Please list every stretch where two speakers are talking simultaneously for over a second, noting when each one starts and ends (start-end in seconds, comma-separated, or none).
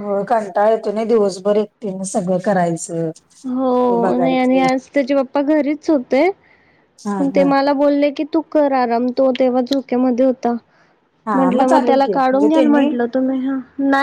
11.3-12.8